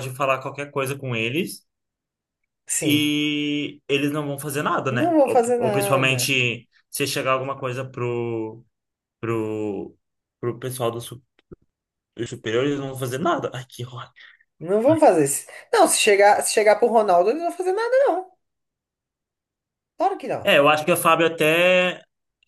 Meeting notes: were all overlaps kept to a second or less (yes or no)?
no